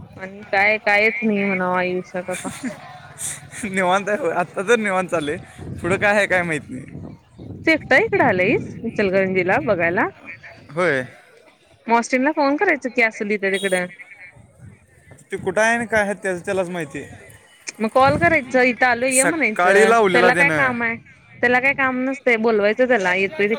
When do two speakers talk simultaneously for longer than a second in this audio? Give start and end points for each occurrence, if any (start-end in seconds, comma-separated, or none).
19.1-20.7